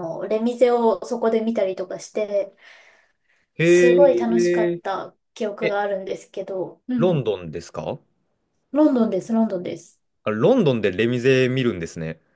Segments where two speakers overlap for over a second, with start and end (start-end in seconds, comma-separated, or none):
3.6-4.8